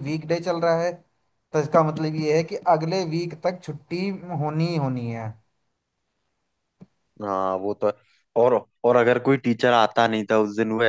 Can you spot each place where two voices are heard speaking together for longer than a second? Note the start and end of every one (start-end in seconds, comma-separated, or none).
none